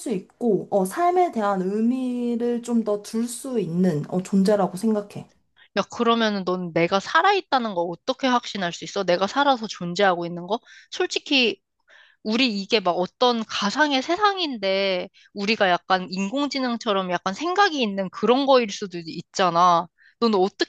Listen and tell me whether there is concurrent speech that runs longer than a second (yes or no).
no